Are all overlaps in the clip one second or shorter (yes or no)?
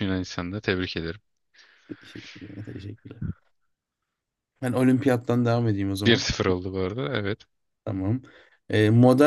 yes